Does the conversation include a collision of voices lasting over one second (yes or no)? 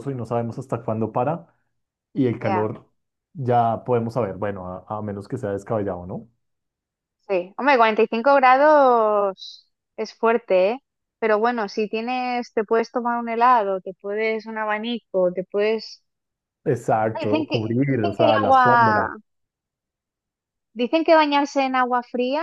yes